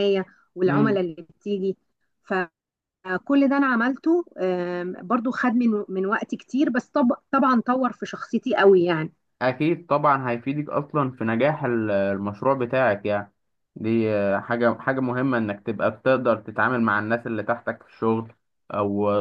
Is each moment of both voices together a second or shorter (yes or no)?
yes